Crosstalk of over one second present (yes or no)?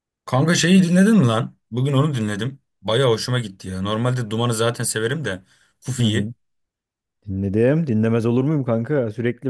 no